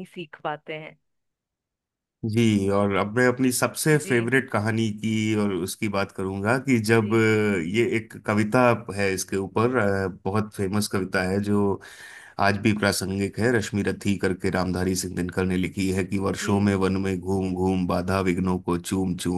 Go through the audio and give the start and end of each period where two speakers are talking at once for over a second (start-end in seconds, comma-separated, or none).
none